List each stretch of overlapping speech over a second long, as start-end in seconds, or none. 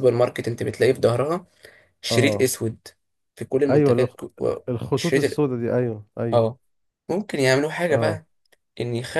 none